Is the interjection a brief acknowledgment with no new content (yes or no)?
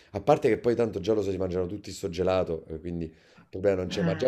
yes